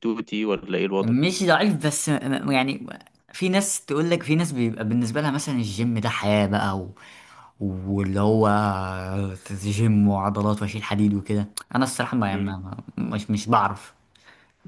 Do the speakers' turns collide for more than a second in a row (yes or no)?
no